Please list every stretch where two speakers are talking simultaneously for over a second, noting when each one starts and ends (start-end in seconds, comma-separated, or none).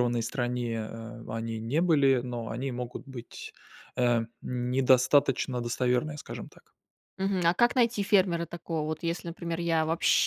none